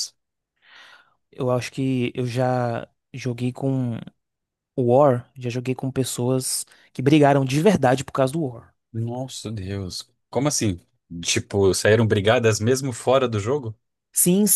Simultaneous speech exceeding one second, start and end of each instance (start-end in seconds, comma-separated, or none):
none